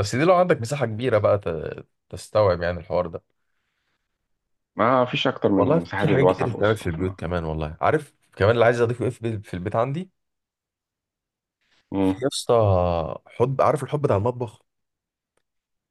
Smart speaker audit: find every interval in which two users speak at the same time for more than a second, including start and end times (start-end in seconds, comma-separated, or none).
5.6-7.2